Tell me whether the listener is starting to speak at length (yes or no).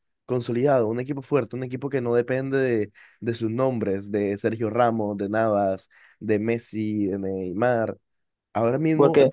no